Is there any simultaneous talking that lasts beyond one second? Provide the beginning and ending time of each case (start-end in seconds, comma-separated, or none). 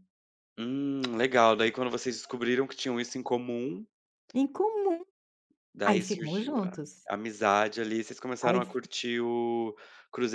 5.8-7.1